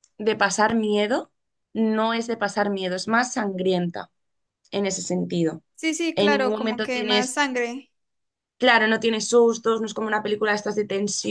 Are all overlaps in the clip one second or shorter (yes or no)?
no